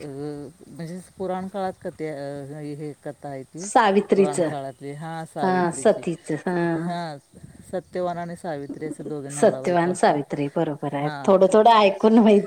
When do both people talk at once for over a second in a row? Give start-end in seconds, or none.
none